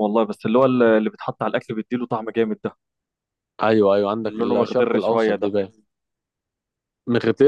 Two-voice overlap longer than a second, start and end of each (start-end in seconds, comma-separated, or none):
4.2-5.5